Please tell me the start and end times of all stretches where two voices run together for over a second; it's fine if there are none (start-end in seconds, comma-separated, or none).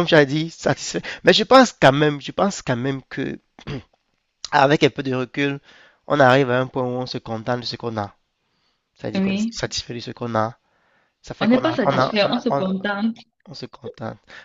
11.4-12.7